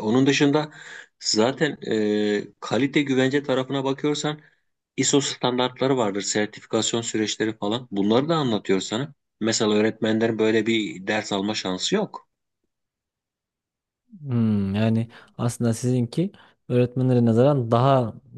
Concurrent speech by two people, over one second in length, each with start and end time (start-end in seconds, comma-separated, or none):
none